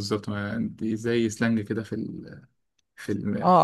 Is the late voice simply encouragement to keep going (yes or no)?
no